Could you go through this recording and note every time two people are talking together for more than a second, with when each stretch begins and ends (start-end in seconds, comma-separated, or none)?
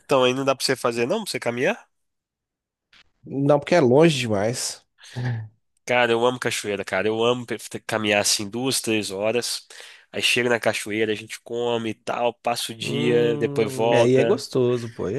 12.8-14.4